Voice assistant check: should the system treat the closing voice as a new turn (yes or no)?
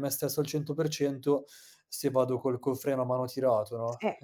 yes